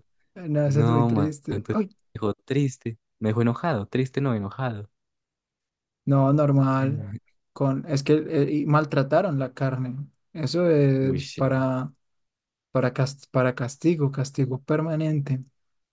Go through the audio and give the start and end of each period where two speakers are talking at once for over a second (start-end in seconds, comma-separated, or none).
0.6-1.9